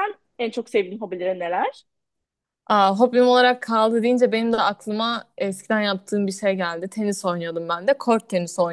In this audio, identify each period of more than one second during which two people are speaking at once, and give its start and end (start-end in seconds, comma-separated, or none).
none